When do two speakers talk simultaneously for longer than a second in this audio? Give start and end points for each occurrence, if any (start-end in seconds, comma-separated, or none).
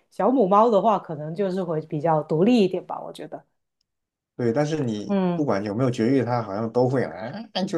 none